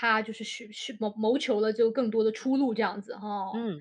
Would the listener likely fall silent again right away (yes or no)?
no